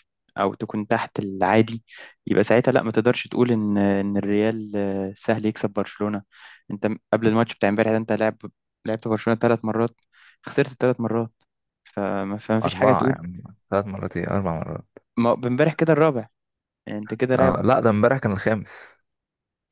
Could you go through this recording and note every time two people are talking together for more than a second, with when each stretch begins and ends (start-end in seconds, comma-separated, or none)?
none